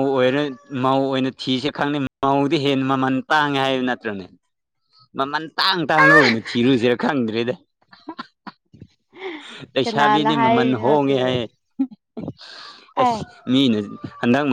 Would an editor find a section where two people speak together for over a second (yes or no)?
yes